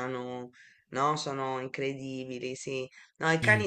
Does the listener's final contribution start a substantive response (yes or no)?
no